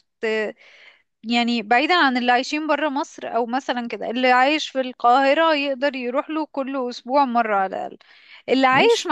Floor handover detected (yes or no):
no